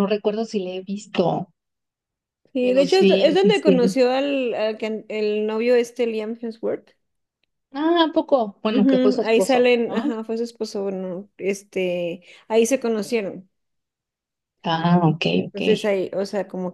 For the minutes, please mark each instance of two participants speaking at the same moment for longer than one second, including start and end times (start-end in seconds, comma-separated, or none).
2.6-4.0, 8.7-10.0